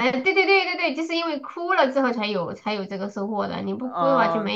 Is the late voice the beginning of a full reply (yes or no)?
yes